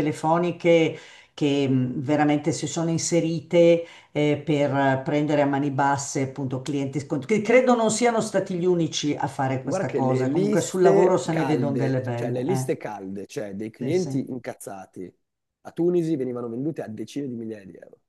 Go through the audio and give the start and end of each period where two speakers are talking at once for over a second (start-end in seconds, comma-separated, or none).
9.6-12.8